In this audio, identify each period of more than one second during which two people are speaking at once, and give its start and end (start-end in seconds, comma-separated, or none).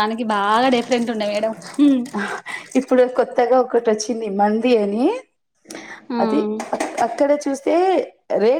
none